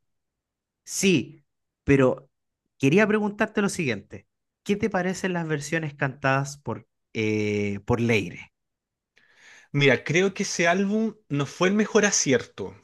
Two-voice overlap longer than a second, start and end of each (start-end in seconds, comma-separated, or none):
none